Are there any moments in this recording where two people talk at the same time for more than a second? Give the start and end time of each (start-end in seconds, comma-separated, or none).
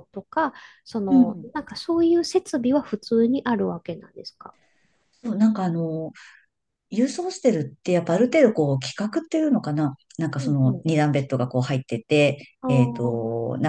none